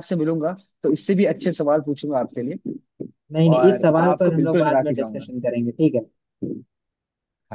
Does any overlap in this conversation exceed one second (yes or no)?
yes